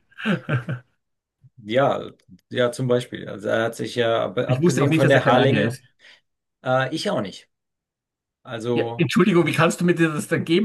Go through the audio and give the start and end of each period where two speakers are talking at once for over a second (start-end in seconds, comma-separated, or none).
4.5-5.8